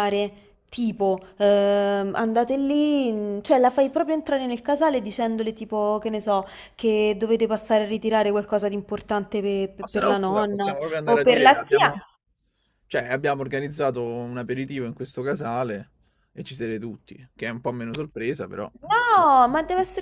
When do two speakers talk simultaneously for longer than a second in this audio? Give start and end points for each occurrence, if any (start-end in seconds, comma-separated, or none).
9.8-11.9